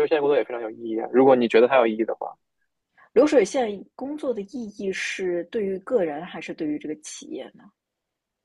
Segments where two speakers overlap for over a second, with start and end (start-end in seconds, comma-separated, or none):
none